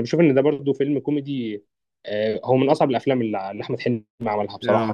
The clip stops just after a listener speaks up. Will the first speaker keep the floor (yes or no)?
no